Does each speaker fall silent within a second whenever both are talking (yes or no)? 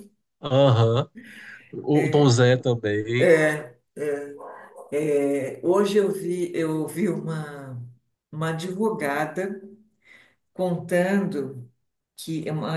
yes